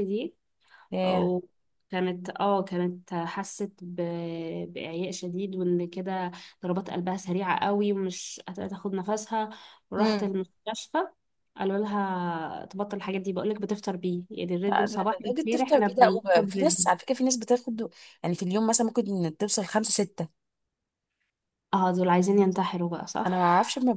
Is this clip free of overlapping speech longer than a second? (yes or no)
no